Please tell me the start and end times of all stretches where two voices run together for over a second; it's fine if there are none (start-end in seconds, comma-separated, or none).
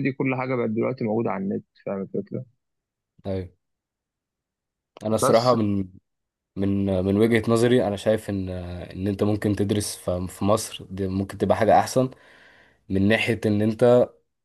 none